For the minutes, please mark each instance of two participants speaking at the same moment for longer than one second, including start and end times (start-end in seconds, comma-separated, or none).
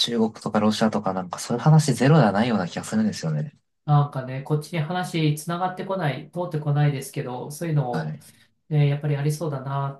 none